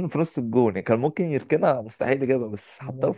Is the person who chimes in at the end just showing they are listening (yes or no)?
no